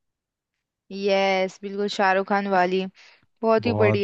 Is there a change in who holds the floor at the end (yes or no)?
yes